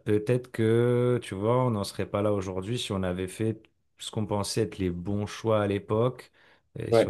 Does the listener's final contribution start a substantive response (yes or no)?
no